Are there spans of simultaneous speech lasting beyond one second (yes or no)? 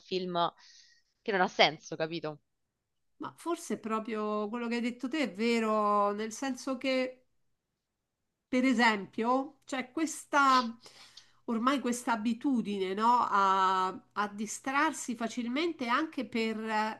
no